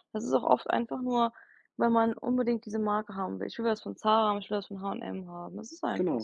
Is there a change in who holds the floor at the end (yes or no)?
yes